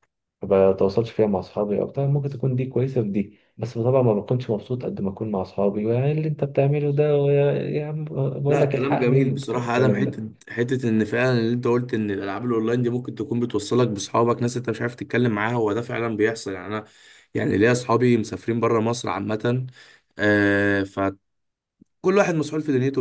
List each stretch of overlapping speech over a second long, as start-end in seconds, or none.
8.5-10.3